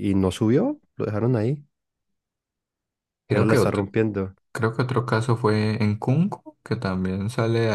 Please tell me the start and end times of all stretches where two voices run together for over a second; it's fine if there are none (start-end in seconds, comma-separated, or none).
none